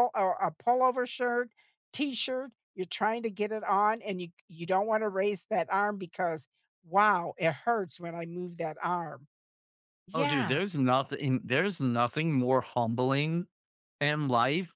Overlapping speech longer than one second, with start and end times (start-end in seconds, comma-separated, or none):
none